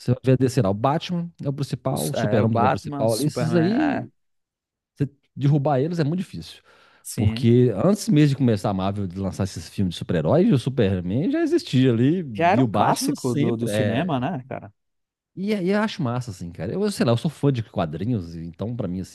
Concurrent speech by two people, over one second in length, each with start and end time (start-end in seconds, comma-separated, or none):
1.9-4.1, 12.3-14.2